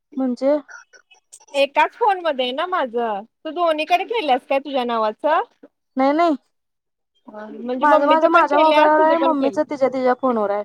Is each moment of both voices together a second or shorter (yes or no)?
no